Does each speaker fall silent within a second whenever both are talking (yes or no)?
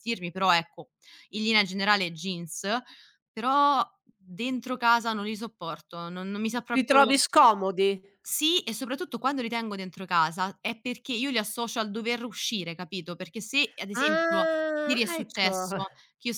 no